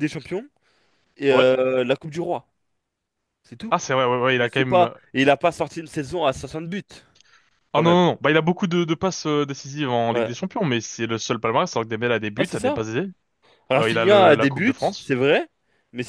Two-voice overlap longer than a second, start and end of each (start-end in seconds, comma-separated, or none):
13.8-15.1